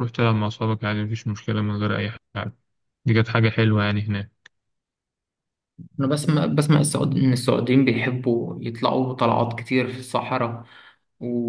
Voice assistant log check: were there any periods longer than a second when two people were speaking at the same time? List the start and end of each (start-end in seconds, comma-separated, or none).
none